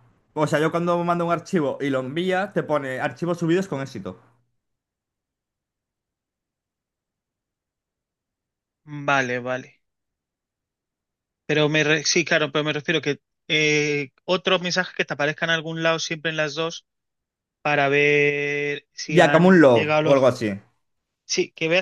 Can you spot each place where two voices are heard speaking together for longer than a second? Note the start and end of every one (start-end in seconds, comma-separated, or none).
19.1-20.4